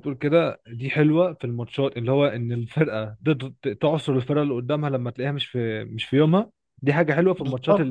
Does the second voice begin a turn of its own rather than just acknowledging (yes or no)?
no